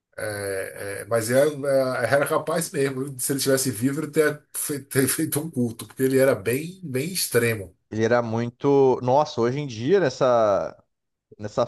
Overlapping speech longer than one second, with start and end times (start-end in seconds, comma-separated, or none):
none